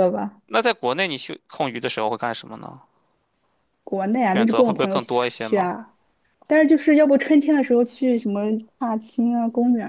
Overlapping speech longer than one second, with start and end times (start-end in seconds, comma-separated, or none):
4.2-5.7